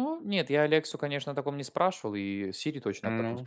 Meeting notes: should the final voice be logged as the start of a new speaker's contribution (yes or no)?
no